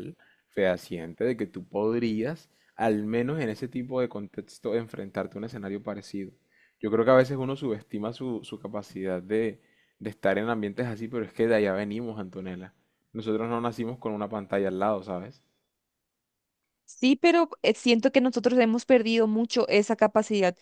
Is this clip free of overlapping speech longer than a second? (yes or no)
yes